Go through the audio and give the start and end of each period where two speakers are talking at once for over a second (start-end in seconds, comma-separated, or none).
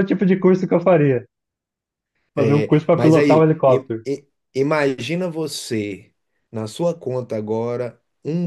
2.3-4.0